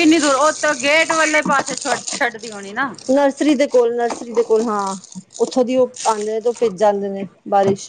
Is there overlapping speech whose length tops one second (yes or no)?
no